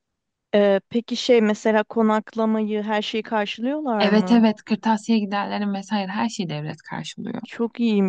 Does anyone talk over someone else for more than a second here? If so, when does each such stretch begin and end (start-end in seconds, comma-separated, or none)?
none